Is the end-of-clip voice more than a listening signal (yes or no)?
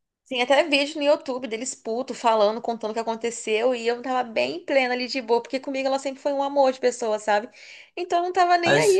no